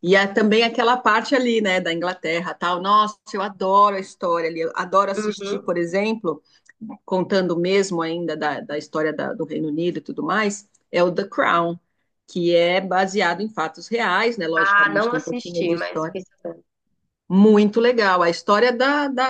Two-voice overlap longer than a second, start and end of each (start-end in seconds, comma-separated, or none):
14.5-16.1